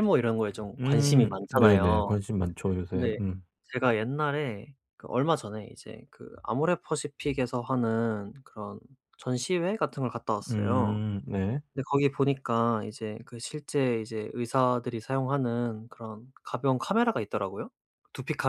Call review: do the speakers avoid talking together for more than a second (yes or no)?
no